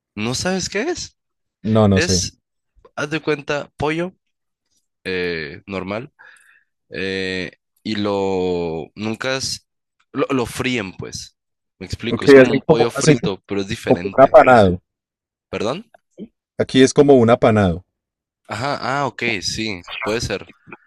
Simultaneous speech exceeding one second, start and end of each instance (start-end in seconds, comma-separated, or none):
12.1-13.3